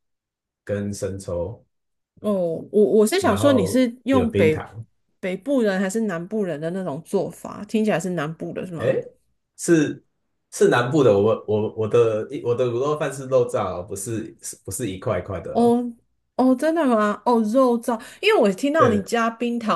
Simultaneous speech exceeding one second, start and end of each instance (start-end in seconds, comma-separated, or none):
3.2-4.7